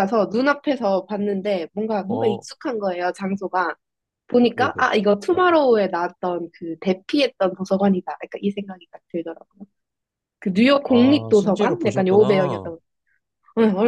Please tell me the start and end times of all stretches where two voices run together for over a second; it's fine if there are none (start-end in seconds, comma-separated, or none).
10.9-12.7